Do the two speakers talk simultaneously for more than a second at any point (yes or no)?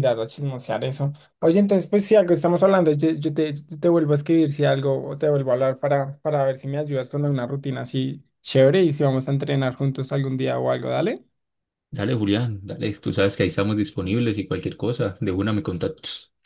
no